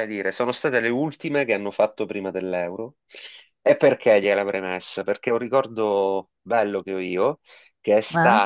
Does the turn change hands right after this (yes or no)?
no